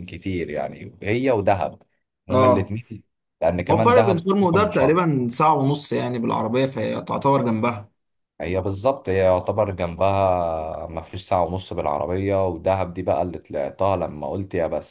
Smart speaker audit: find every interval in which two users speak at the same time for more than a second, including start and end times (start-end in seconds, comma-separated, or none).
3.7-5.0